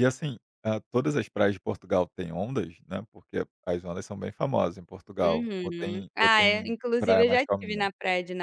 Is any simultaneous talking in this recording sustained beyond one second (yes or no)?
yes